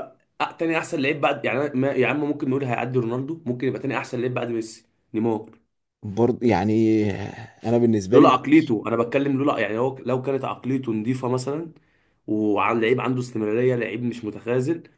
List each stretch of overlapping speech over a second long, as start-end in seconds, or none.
none